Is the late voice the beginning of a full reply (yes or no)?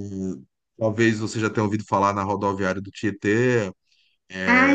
yes